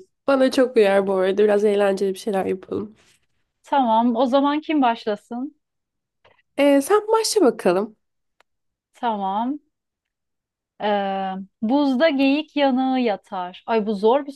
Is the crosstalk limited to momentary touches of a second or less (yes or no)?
yes